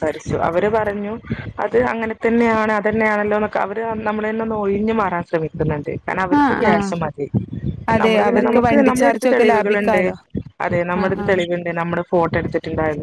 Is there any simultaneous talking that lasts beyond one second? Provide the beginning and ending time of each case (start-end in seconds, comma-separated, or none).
8.0-10.0